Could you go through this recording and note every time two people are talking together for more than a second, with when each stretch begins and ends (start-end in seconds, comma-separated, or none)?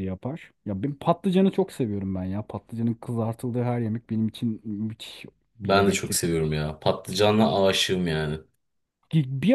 none